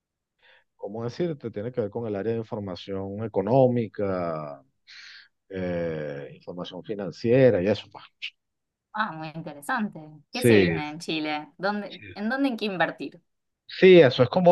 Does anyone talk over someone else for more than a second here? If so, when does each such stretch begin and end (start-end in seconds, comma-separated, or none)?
none